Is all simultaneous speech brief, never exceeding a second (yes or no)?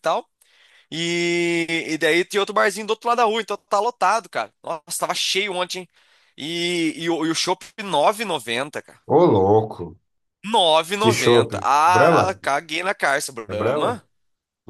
no